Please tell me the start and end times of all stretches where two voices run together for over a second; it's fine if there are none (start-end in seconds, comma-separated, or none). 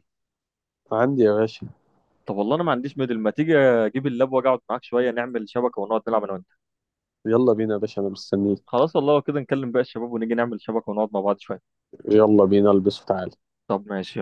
none